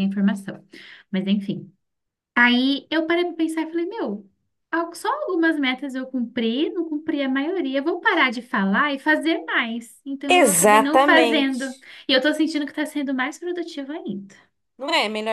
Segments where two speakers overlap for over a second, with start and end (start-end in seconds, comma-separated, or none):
10.4-11.7